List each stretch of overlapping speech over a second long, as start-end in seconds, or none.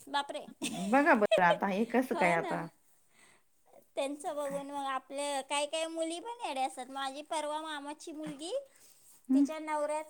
none